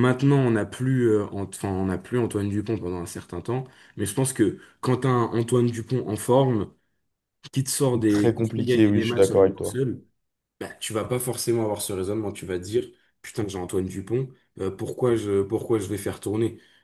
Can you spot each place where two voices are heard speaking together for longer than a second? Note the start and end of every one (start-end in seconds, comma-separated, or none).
8.1-9.8